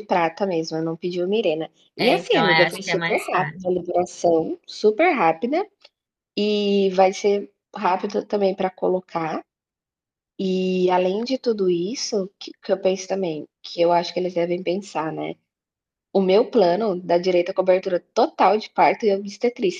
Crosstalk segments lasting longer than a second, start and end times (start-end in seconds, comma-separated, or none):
1.9-3.6